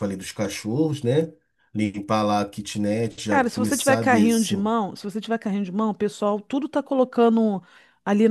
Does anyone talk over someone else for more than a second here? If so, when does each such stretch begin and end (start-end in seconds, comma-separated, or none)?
3.2-4.5